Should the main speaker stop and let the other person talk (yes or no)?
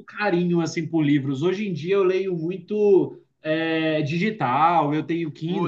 no